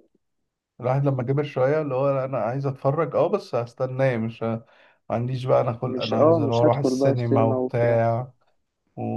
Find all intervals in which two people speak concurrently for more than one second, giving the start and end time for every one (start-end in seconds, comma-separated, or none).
5.9-8.0